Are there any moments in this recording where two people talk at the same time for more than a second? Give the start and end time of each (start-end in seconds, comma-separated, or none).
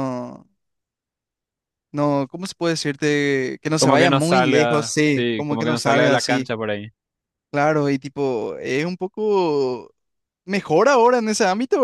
3.8-6.5